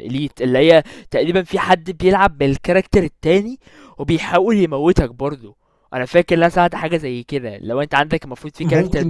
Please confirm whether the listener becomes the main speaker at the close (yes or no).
yes